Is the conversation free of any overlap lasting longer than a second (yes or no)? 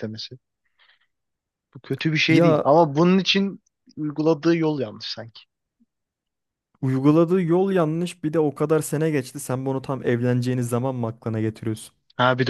yes